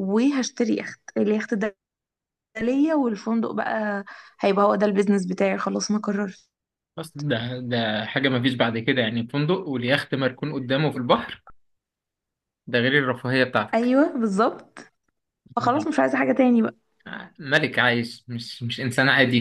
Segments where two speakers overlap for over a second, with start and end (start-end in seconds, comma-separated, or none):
none